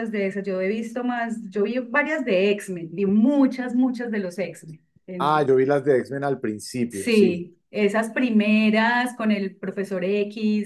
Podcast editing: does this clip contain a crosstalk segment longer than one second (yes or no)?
no